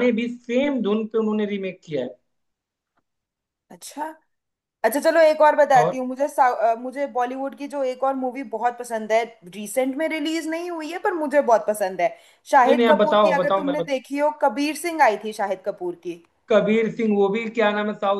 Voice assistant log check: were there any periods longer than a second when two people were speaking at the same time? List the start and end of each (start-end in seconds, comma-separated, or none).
12.7-14.1